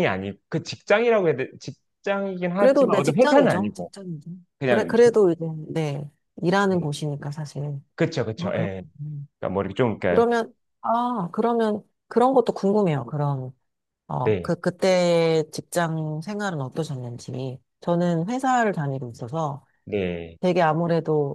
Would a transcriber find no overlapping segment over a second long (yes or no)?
no